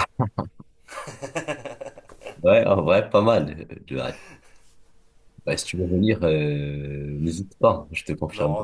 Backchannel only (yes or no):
no